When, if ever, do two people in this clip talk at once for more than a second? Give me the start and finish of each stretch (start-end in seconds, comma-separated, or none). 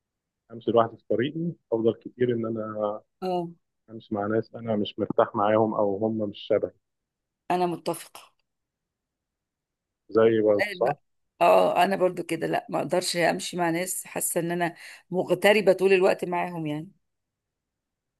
none